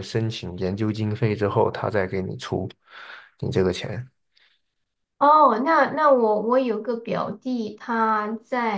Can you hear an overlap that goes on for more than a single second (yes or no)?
no